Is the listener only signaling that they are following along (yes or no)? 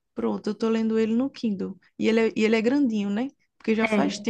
yes